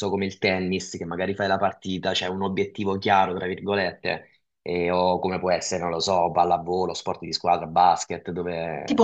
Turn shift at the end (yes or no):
yes